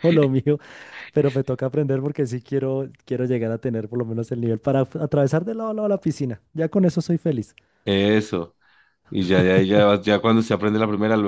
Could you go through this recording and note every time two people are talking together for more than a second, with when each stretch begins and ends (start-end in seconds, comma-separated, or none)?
none